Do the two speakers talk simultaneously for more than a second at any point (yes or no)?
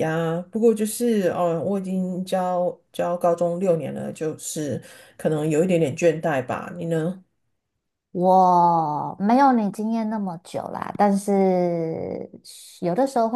no